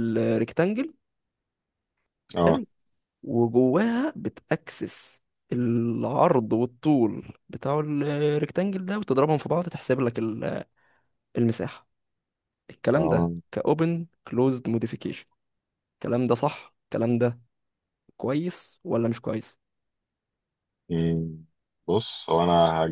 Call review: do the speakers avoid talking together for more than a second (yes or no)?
yes